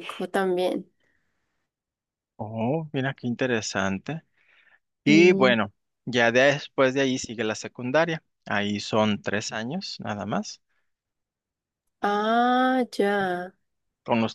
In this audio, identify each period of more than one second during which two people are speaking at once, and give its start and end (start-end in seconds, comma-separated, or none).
none